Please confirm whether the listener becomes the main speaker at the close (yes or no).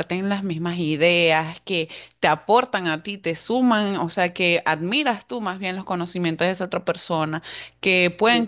no